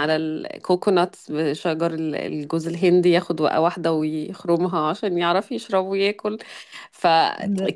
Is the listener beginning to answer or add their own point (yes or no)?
no